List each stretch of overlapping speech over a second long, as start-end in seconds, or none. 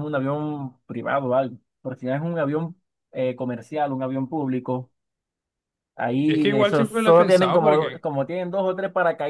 6.3-8.0